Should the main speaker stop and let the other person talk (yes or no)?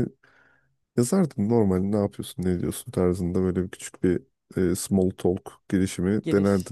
yes